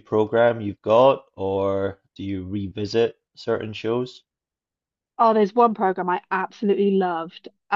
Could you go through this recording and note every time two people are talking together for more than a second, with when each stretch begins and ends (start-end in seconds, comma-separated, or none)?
none